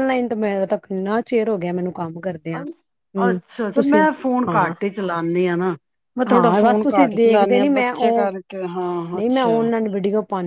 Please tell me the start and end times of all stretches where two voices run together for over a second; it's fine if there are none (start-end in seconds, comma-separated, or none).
6.3-8.2